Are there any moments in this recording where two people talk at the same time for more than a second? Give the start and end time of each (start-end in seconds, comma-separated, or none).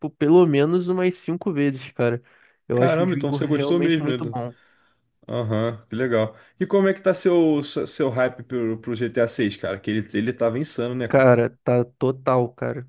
2.7-4.2